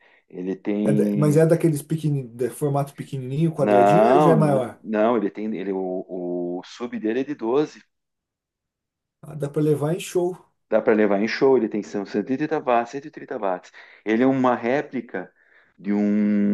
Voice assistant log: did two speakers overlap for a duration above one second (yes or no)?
yes